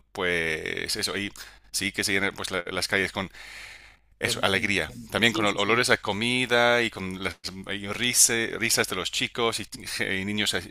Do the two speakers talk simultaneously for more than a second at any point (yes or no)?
yes